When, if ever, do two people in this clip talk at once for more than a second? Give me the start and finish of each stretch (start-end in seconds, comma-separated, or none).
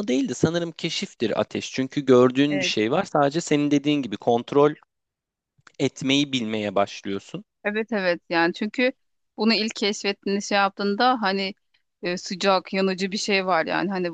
none